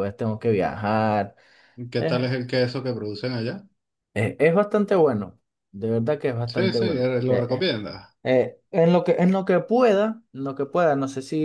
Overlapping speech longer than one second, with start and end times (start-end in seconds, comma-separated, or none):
6.5-7.7